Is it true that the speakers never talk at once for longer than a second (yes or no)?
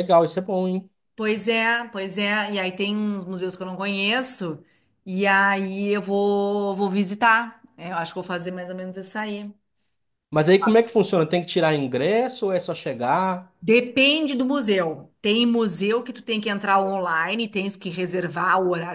yes